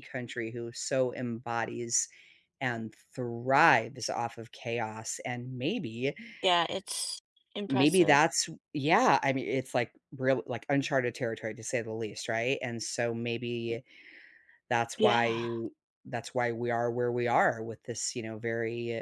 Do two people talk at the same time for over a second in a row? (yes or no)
no